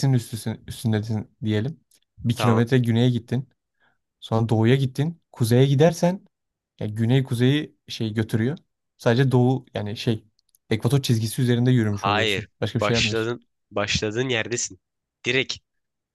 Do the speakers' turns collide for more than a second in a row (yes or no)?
yes